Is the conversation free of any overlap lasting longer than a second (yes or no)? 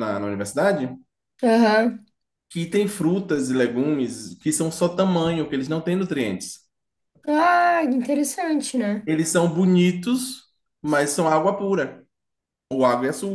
yes